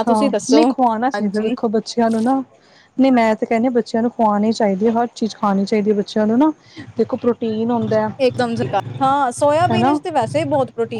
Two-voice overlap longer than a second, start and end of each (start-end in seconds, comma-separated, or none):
none